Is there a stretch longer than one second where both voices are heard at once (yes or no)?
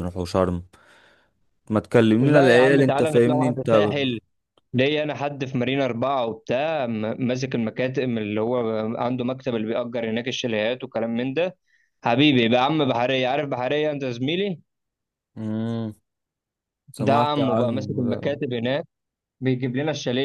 yes